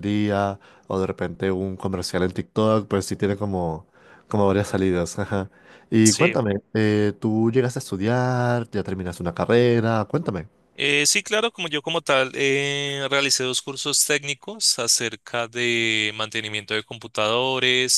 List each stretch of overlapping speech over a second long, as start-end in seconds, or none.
none